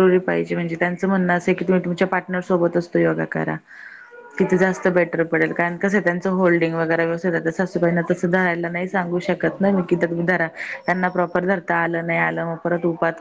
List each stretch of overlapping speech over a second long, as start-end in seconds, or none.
7.5-9.2